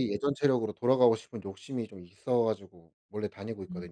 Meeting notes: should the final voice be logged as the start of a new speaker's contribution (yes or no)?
yes